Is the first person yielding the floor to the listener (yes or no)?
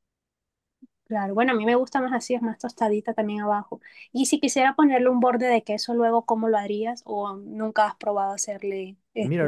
yes